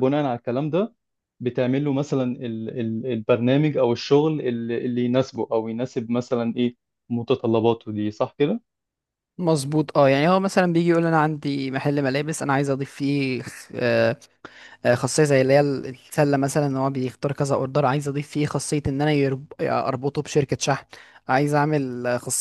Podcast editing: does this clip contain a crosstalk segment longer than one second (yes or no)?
no